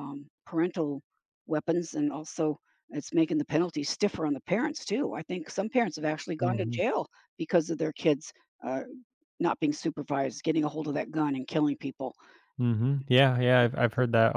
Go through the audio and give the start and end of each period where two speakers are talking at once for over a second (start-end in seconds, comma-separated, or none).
none